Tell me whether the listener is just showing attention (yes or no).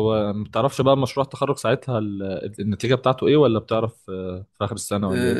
no